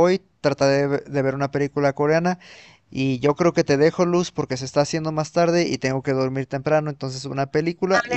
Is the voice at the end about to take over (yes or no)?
yes